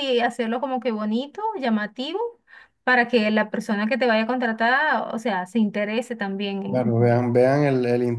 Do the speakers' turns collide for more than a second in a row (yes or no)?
no